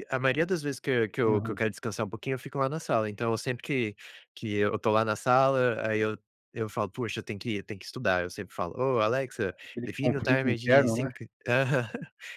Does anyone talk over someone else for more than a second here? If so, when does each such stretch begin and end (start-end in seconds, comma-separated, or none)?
9.8-11.1